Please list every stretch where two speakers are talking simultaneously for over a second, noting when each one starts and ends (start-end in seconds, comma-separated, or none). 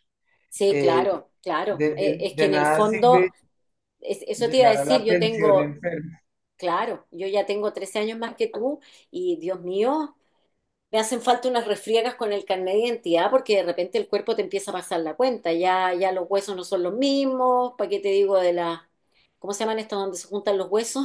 1.7-3.3, 4.4-5.8